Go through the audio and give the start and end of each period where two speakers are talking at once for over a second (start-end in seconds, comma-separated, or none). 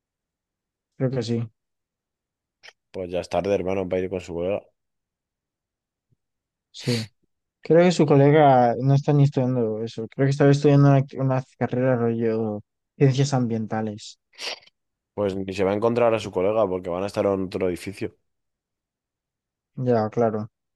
none